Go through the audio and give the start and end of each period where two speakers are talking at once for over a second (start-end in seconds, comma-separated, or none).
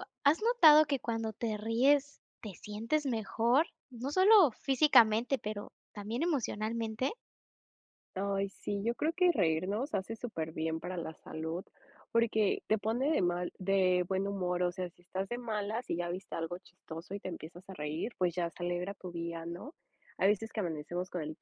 none